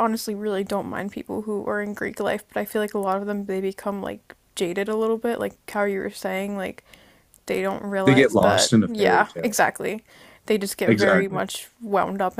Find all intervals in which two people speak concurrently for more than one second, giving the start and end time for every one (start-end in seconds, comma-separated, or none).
8.1-9.6